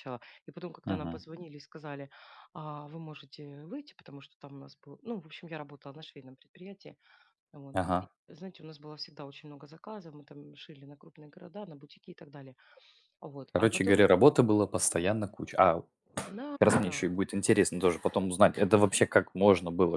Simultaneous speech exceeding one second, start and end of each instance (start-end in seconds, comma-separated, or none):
none